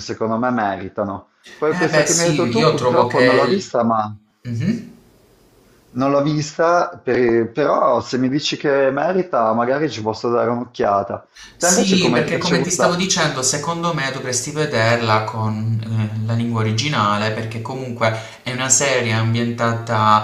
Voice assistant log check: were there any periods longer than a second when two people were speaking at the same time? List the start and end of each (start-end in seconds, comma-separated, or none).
1.7-3.7, 11.6-13.1